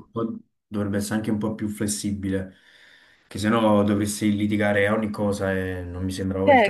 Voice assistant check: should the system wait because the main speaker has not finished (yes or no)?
no